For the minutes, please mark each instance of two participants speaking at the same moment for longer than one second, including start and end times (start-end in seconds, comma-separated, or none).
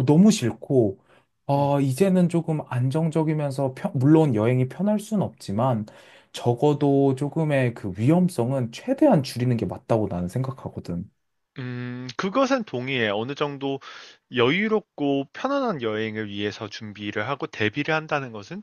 none